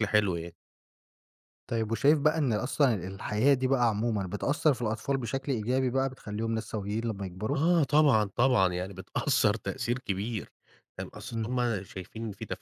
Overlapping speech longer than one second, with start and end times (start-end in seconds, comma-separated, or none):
none